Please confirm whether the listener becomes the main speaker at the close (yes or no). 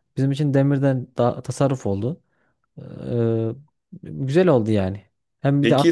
no